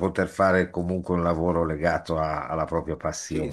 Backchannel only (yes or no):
no